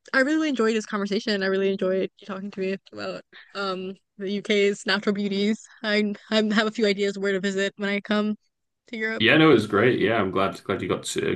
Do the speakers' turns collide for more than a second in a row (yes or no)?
no